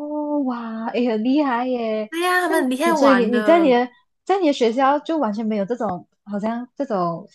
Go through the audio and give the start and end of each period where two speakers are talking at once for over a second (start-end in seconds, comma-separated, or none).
2.1-3.8